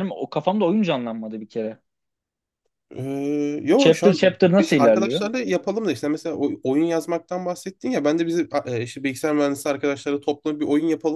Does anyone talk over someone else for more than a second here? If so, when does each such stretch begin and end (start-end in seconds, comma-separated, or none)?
3.8-5.2